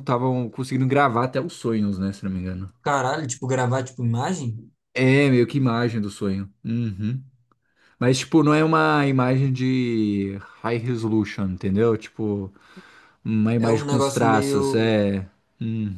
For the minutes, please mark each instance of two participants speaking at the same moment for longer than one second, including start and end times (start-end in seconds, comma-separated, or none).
13.6-15.0